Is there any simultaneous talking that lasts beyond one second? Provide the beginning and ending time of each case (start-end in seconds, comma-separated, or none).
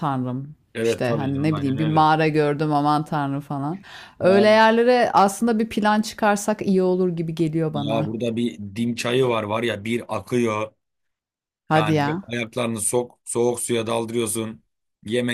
0.7-2.1